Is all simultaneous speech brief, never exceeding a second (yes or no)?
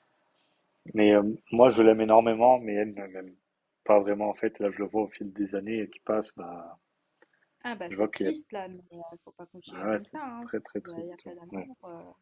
no